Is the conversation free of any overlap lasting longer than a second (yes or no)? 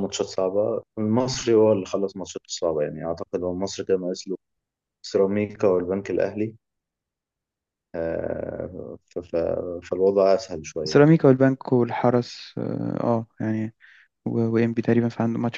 yes